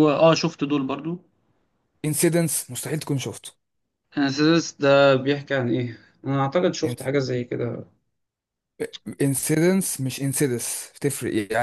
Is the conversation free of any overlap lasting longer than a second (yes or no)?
yes